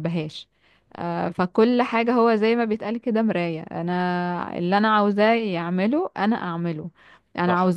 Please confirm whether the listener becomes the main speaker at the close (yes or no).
no